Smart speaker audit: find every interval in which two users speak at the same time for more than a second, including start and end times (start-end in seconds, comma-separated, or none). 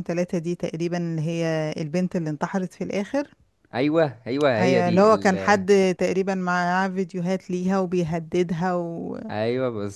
none